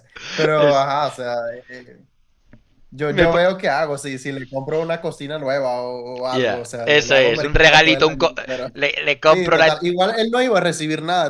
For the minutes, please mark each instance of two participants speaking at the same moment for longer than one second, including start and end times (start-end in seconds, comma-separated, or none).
6.3-8.3